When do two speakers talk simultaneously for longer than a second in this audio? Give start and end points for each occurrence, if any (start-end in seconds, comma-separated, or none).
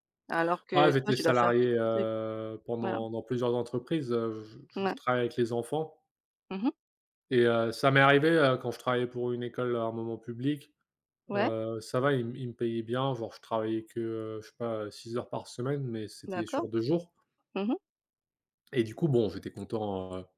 0.7-2.1